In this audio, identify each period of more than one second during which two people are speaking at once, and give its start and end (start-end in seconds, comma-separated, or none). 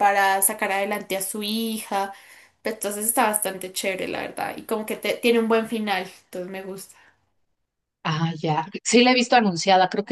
none